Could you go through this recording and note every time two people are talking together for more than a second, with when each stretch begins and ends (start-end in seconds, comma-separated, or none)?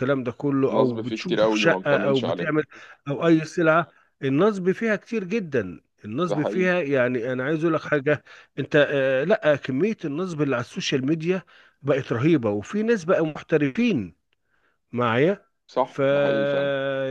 0.7-2.5